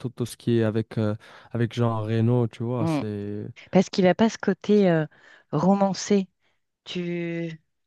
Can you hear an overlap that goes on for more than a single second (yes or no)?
no